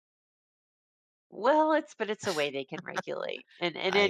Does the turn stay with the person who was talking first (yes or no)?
yes